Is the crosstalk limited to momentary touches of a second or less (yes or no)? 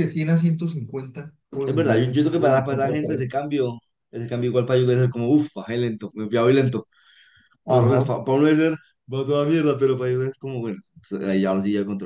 no